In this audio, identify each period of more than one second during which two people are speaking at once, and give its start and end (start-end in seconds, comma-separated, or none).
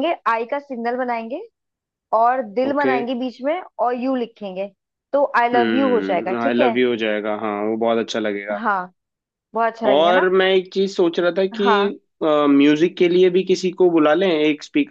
5.5-6.8